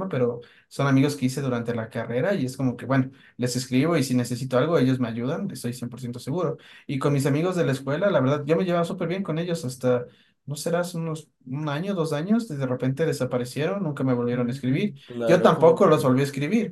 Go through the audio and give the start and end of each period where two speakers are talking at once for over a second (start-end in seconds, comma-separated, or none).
14.3-16.1